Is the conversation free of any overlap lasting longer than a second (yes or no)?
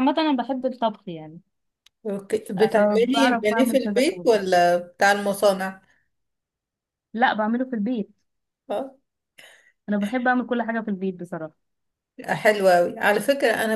no